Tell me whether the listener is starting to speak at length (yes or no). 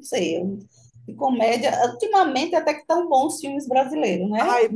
yes